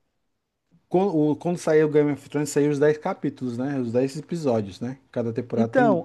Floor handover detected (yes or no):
yes